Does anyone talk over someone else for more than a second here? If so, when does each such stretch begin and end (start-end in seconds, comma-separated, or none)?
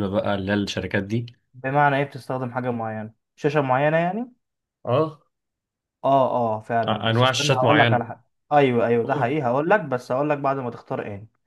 6.9-8.1